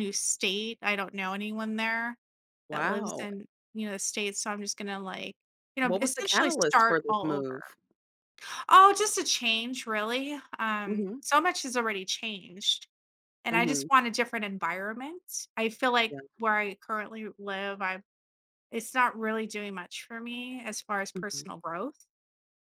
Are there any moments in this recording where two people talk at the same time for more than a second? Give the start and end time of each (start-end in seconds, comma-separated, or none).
5.8-7.5